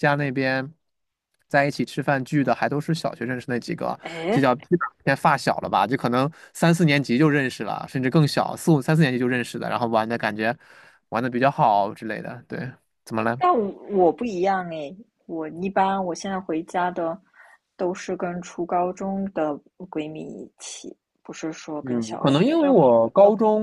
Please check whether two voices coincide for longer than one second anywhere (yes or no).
yes